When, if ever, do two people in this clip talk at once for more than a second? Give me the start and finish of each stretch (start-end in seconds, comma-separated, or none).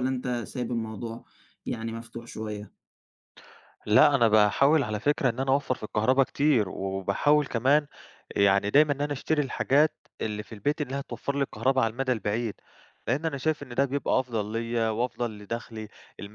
none